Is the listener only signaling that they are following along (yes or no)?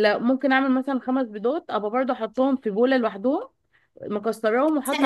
yes